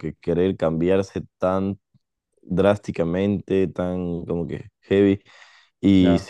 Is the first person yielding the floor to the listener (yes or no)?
no